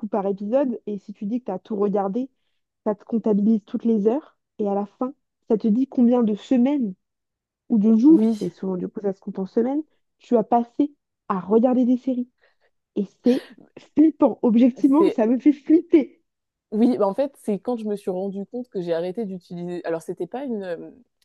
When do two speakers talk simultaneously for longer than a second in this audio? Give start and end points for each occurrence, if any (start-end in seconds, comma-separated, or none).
none